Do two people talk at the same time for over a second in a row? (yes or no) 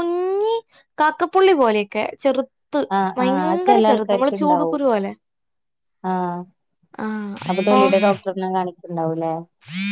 yes